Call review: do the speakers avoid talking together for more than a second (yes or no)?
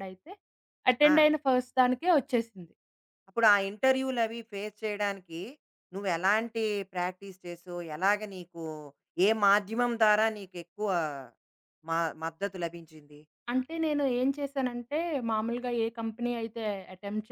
yes